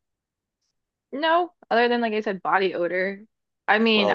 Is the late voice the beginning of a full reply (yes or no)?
no